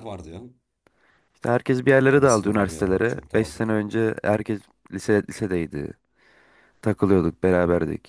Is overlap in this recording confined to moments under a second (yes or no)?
no